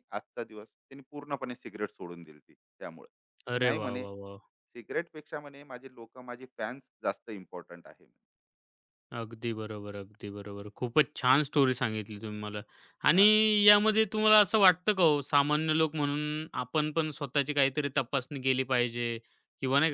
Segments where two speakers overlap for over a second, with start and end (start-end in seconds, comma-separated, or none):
none